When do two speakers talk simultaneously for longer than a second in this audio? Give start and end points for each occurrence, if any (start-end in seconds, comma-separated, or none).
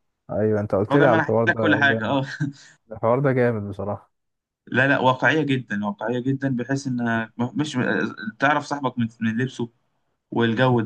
0.9-2.2